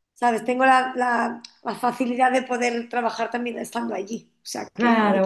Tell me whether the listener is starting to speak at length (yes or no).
yes